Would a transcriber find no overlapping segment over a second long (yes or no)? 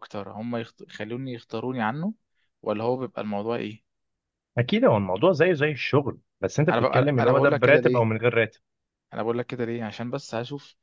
no